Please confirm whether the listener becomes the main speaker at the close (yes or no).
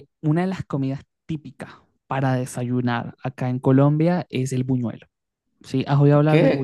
yes